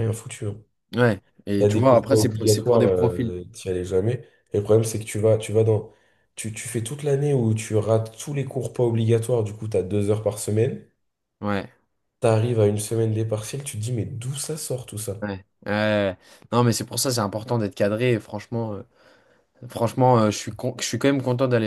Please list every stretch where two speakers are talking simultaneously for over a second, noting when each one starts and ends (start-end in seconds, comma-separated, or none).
1.6-3.4